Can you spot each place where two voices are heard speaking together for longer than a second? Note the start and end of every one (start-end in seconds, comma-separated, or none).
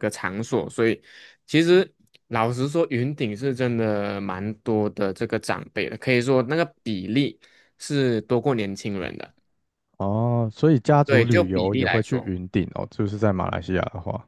11.1-12.3